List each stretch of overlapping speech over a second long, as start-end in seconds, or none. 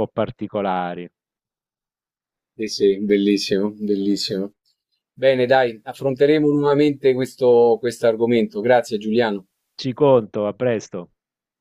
none